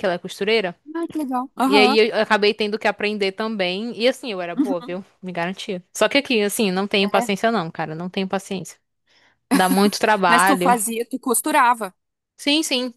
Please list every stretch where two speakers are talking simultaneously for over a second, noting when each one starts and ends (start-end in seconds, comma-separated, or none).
none